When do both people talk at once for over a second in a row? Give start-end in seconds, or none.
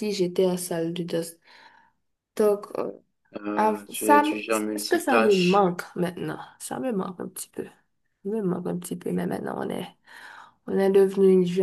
3.6-5.7